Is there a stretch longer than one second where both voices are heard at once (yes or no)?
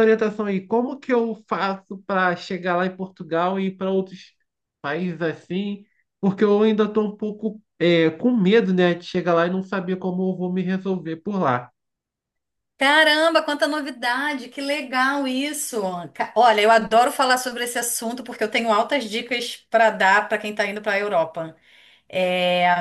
no